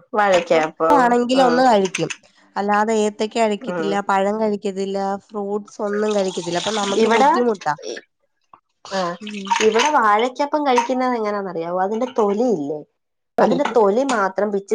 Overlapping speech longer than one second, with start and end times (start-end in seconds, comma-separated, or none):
none